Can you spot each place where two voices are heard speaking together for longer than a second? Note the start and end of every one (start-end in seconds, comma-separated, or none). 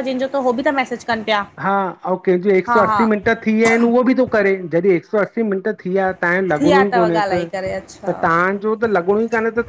6.5-8.2